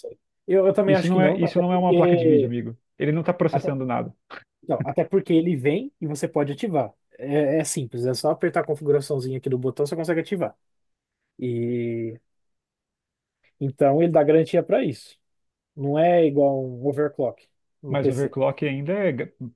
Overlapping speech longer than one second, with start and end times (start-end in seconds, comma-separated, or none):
0.8-2.5